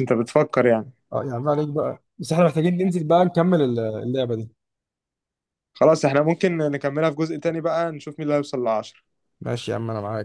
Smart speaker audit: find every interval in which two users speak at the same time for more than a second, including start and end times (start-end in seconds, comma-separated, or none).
none